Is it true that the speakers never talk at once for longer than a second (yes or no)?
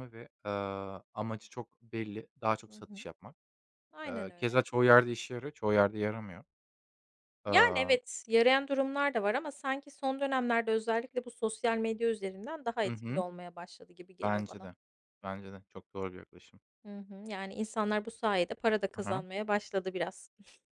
yes